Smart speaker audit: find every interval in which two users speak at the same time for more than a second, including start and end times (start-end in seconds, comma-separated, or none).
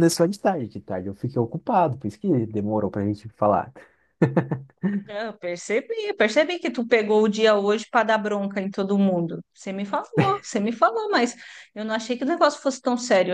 none